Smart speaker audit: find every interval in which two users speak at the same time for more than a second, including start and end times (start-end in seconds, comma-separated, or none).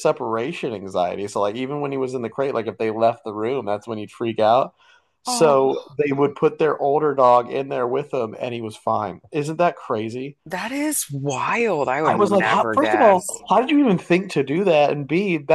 12.0-13.4